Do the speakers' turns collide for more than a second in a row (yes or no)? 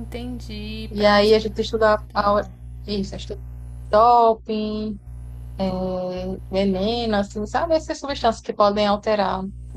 no